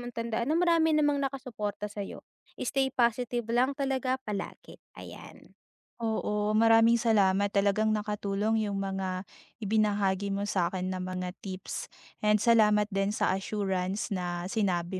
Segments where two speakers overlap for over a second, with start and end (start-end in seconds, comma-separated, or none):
none